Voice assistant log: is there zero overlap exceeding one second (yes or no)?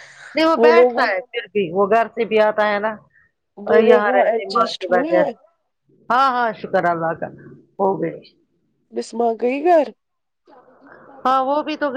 no